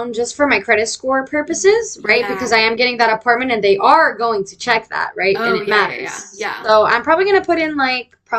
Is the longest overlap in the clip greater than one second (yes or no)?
yes